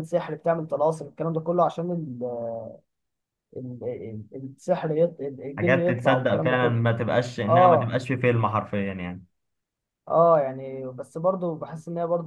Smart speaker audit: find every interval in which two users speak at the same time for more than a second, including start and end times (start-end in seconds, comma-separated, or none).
5.6-6.8